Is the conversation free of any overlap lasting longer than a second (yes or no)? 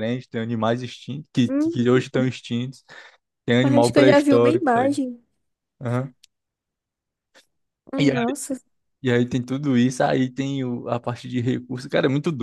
no